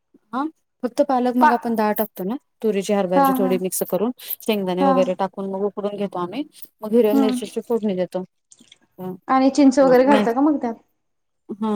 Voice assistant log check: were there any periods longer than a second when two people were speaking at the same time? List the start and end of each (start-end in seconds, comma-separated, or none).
none